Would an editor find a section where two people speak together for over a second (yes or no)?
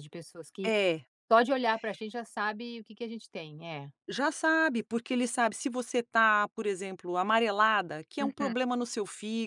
no